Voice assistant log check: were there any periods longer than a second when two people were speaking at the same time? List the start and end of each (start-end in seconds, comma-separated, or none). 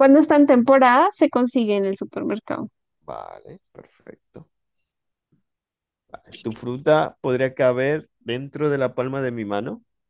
none